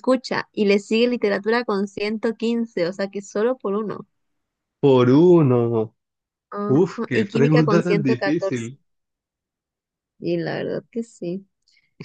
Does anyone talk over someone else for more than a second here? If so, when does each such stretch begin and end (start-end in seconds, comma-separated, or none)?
6.7-8.7